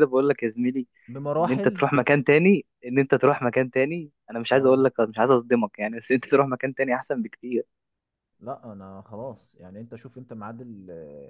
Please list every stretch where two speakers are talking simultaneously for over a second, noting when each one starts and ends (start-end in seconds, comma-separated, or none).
none